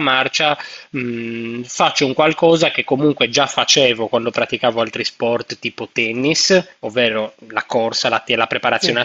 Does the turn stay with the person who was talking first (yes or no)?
yes